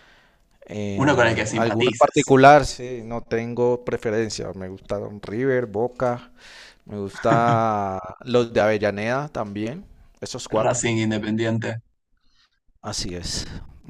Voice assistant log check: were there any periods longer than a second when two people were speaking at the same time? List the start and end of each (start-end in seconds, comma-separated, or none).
0.9-2.4